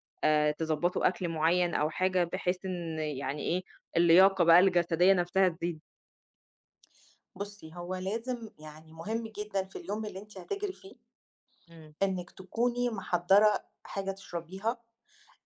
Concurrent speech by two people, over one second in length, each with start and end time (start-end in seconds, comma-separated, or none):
none